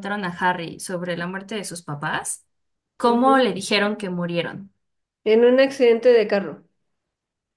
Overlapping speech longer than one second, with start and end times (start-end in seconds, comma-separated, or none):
none